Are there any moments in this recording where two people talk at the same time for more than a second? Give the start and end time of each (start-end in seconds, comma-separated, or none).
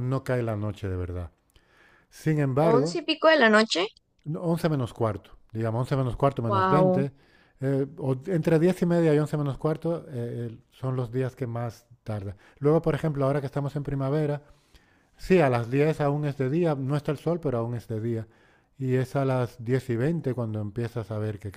none